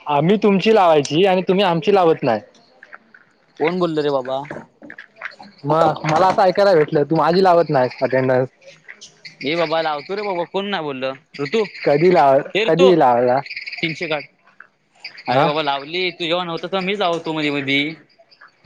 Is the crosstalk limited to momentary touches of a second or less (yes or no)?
yes